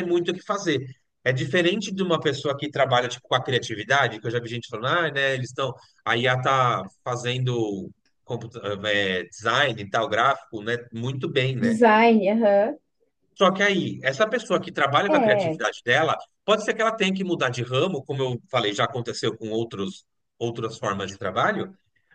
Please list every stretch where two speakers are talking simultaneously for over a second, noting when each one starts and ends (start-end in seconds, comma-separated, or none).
none